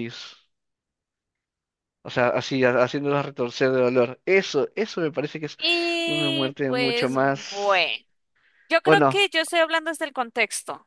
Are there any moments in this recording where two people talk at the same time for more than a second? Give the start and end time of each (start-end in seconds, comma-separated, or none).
6.0-7.8